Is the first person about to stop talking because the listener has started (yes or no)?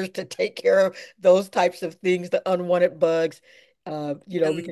no